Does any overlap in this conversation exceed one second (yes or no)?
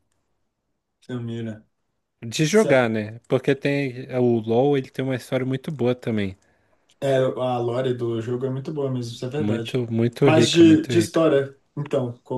yes